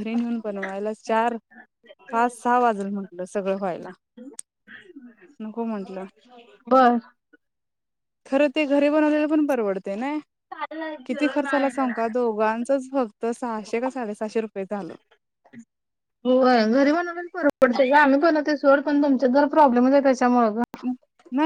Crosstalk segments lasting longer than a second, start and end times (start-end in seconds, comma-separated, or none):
none